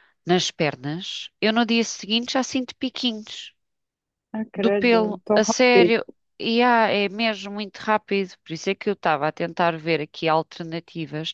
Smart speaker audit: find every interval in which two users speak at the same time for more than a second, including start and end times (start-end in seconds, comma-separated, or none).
4.5-5.9